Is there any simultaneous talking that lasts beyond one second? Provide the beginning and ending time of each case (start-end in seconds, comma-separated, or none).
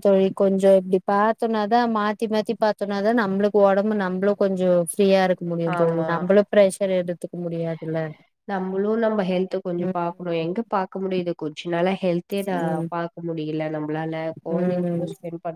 none